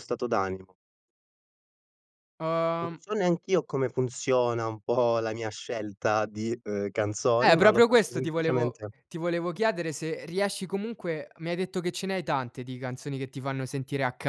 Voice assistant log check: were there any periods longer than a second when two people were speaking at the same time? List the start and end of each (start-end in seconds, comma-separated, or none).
7.4-8.9